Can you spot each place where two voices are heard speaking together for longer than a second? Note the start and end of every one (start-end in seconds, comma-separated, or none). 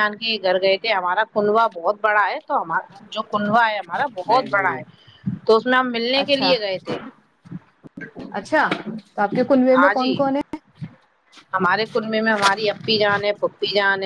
none